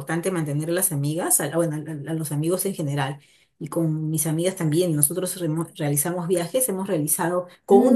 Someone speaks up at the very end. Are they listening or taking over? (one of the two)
listening